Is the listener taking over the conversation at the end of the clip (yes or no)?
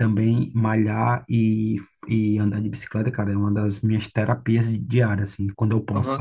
yes